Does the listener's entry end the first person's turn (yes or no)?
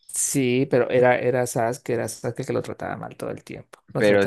yes